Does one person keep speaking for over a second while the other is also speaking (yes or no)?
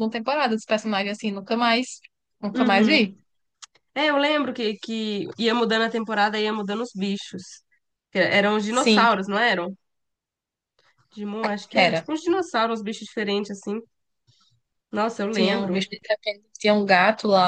no